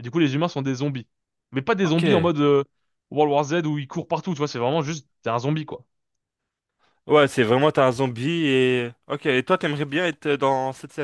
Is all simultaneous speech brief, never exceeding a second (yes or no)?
yes